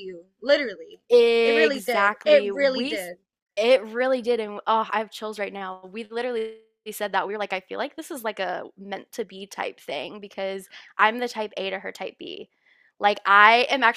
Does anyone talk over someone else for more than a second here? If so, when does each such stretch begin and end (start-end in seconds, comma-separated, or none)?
1.4-3.1